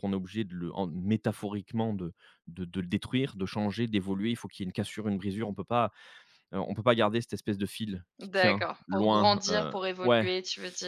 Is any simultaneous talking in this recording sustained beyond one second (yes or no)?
yes